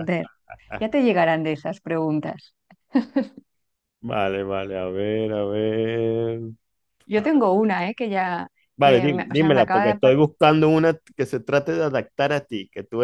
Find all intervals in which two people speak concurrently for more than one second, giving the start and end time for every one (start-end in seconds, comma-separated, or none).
8.8-10.2